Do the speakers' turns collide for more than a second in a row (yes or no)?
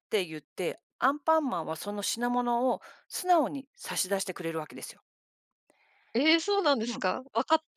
no